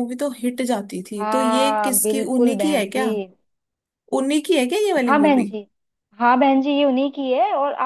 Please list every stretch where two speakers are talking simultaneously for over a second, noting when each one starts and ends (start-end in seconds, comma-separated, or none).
1.2-3.1